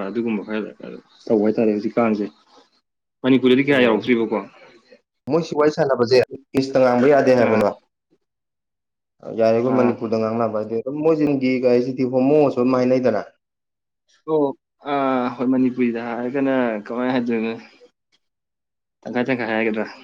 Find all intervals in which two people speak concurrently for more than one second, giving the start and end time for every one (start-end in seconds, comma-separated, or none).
none